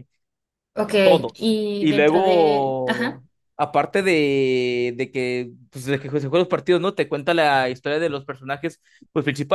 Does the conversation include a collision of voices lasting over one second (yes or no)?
yes